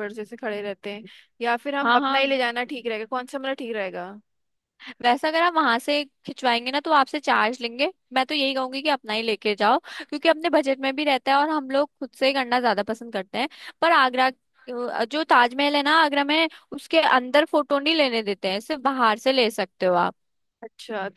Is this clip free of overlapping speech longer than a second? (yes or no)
yes